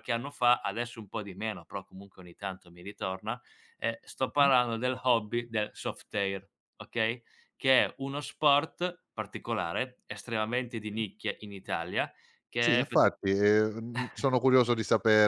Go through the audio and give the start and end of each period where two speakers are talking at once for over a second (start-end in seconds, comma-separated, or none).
none